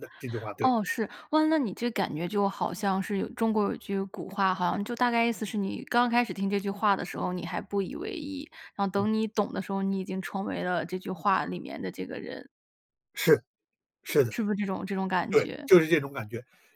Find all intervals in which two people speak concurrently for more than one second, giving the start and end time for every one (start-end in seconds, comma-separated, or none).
none